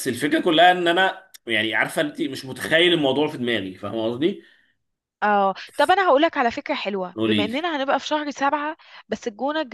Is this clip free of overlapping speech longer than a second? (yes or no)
yes